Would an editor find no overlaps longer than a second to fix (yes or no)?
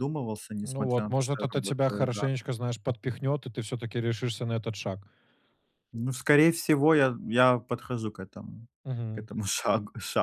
no